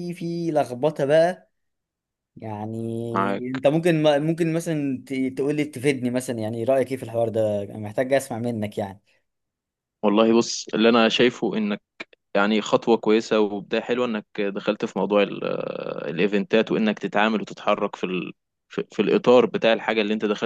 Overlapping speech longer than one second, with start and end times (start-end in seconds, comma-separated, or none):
none